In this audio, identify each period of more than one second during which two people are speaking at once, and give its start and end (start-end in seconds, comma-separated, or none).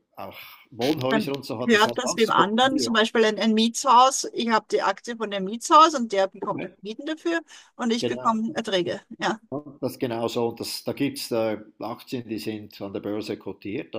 1.1-3.0